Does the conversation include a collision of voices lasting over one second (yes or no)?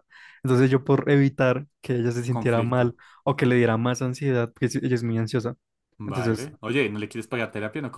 no